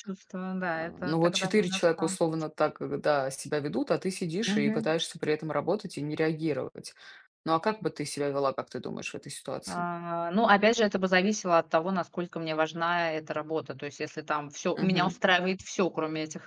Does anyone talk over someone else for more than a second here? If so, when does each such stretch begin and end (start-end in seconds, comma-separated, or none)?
0.7-2.2